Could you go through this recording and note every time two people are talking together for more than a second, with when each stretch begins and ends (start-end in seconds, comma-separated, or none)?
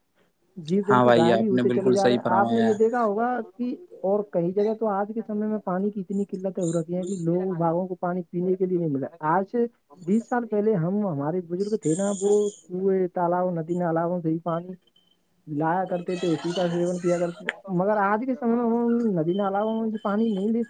0.9-2.7